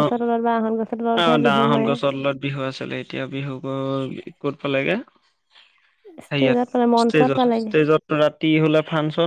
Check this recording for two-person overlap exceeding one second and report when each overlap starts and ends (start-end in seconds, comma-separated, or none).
6.3-7.7